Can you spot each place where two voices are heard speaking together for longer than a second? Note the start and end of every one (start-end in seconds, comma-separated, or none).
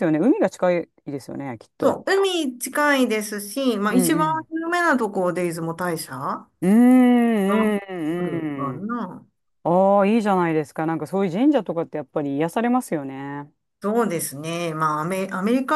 7.5-8.9